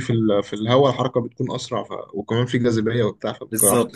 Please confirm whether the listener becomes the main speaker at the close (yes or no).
yes